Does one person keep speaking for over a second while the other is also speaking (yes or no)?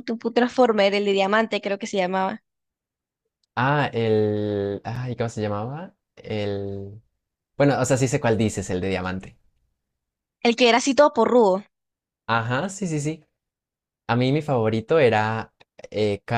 no